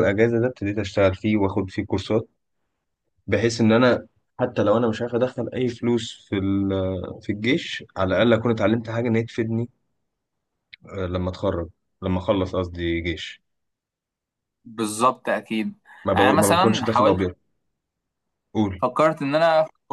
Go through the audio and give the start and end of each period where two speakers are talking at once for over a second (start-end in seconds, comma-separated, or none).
16.1-17.2